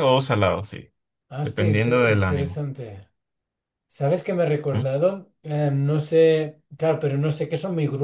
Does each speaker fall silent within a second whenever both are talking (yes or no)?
no